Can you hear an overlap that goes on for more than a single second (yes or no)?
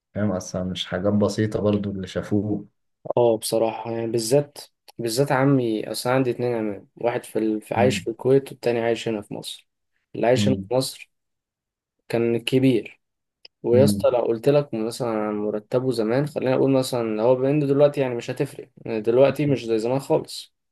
no